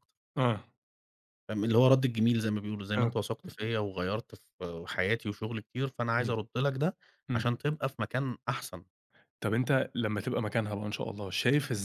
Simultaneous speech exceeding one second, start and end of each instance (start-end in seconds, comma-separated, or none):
none